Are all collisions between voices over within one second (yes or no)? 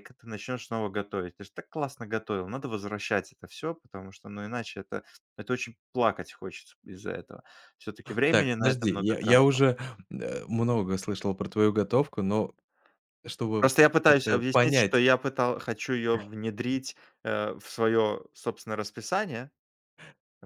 no